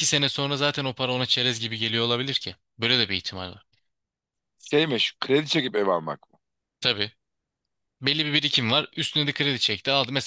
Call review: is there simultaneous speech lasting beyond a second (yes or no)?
no